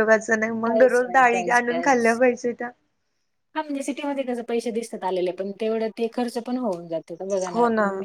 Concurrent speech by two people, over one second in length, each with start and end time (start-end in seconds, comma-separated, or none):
0.7-2.1